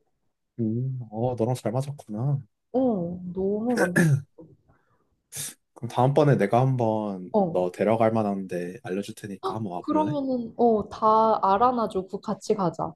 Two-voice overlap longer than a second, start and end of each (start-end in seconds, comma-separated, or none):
none